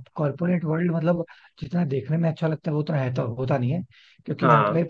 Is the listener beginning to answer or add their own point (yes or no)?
no